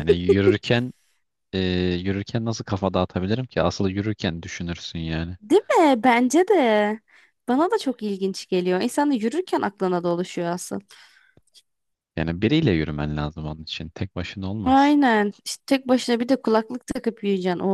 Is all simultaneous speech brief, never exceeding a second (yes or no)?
yes